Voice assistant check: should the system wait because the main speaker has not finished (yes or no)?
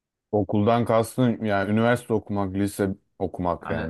no